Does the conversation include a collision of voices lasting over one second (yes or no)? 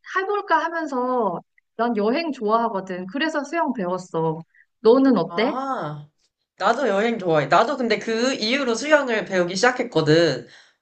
no